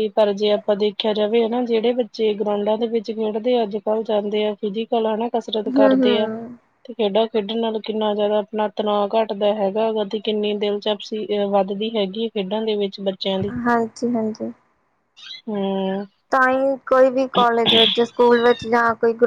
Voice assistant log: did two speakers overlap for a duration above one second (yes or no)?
no